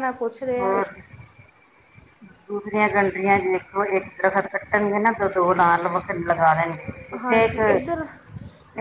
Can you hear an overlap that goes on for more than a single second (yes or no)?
no